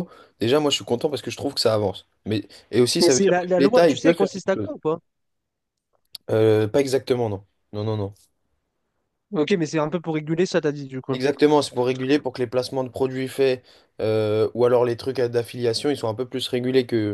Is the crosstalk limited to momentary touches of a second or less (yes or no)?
no